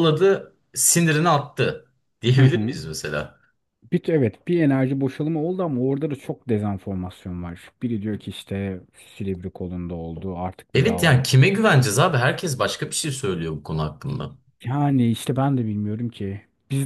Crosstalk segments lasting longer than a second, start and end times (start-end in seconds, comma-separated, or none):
none